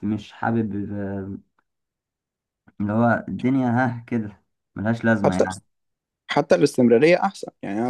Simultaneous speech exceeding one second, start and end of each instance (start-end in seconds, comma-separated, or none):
none